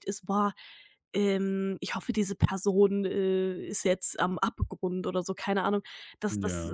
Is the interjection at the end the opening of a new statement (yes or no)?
no